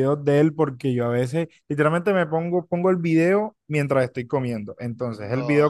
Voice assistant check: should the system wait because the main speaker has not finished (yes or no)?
yes